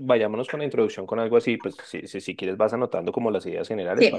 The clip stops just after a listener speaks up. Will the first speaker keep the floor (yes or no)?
no